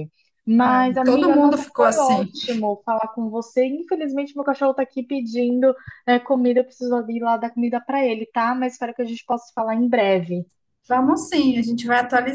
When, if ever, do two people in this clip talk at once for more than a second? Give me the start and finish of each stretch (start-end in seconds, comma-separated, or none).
0.6-2.3